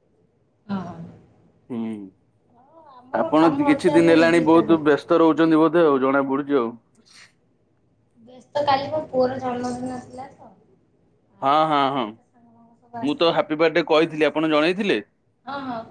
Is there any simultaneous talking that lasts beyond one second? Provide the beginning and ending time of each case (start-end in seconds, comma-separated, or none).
3.2-4.8